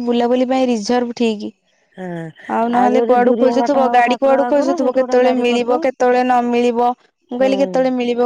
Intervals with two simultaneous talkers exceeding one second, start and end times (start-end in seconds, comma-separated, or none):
2.9-5.8